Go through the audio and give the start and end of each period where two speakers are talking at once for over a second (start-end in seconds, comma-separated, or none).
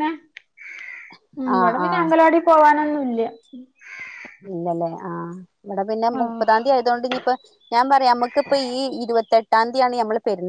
none